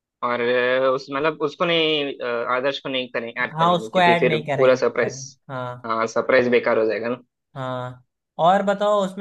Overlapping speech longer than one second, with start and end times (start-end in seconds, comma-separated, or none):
3.5-5.1